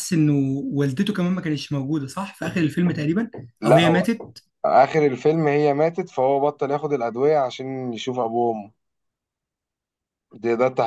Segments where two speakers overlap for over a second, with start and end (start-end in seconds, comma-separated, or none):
none